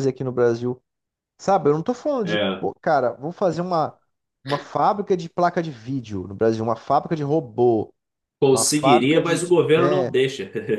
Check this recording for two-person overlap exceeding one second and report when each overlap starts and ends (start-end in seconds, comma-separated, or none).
8.5-10.1